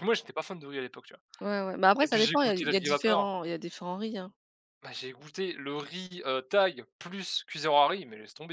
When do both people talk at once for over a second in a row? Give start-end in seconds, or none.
2.0-3.3